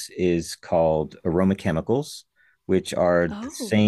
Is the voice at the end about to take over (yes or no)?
no